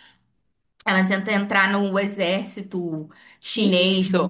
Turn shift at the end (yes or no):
yes